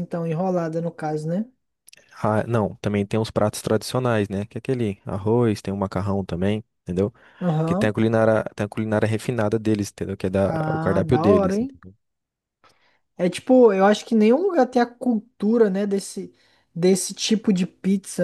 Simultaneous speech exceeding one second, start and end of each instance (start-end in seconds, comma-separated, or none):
10.4-11.8